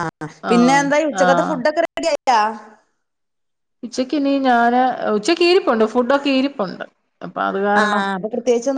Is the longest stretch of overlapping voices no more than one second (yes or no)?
yes